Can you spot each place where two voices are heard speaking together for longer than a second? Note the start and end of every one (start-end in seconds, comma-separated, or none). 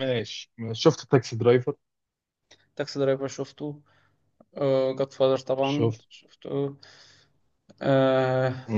none